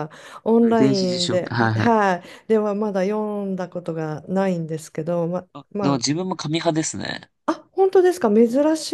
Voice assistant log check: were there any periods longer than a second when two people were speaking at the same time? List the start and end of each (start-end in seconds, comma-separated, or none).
0.6-2.0